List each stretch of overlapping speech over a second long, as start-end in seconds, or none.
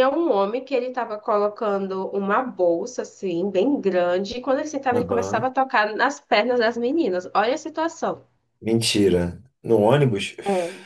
none